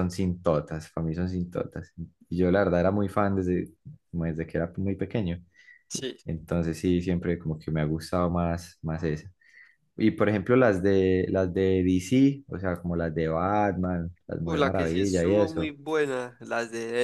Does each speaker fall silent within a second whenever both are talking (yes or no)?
no